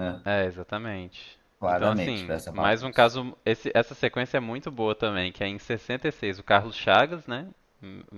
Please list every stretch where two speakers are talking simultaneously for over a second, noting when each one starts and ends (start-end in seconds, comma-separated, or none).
1.6-3.1